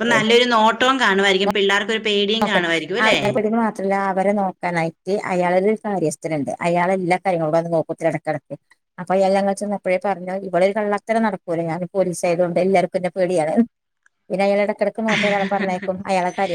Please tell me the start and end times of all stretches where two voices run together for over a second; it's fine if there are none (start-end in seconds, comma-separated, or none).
none